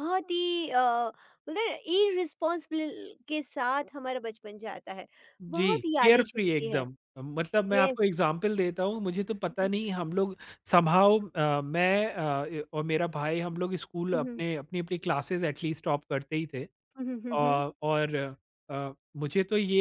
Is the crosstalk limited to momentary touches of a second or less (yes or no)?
no